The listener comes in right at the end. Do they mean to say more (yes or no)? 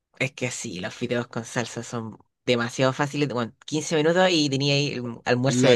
yes